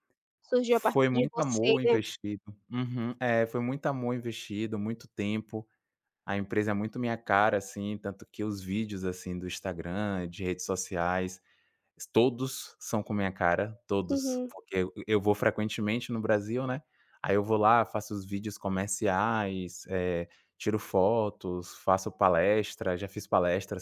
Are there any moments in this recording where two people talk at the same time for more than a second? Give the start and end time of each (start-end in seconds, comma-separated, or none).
0.7-2.0